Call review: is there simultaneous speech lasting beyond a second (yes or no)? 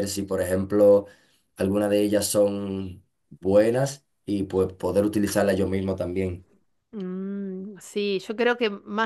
no